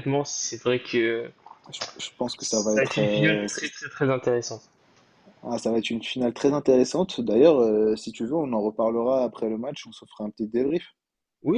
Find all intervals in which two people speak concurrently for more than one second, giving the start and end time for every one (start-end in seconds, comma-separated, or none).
2.4-3.6